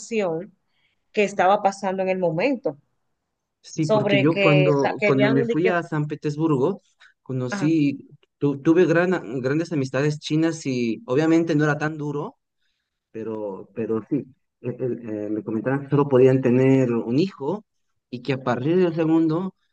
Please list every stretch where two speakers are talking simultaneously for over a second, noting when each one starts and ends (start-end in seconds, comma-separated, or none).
3.8-5.7